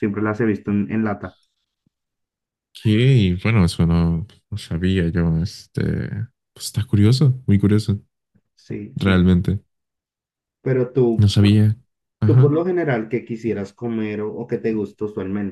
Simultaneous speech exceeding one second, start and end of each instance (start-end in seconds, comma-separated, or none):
none